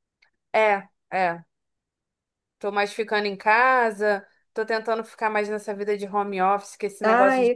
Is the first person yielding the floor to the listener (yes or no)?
yes